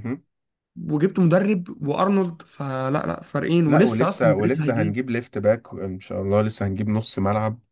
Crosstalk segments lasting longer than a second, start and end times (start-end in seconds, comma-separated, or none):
3.6-5.0